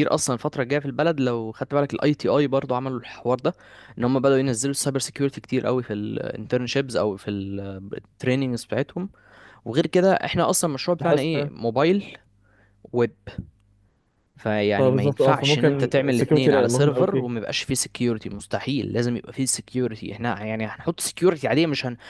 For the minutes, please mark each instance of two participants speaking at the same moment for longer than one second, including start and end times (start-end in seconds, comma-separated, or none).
14.8-17.4